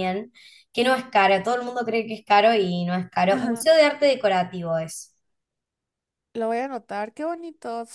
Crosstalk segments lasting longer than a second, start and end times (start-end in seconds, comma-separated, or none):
none